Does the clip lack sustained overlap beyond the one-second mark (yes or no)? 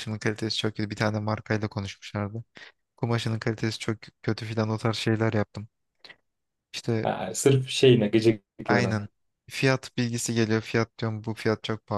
yes